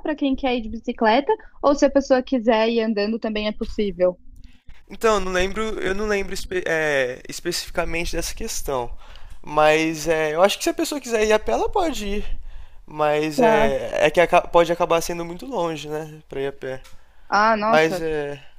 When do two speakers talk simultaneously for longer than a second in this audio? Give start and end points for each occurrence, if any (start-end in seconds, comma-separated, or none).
none